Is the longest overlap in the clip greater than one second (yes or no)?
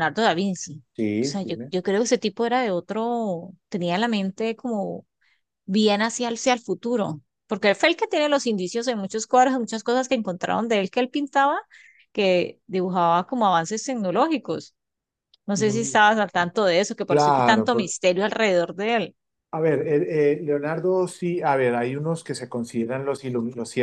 no